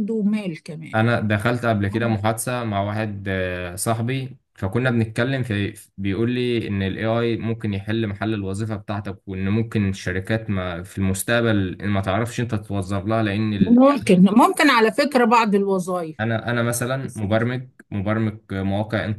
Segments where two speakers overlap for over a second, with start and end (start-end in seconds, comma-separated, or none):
none